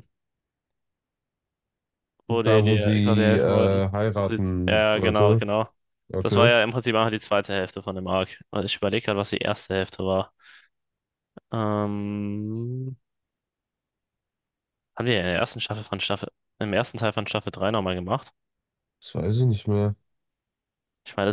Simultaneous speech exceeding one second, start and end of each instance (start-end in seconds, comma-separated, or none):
2.3-5.4